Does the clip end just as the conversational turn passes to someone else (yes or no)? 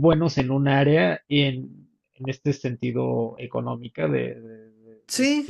no